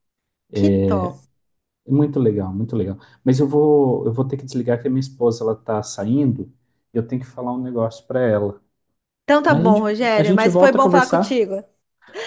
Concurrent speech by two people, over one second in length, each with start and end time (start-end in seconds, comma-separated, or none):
9.5-11.4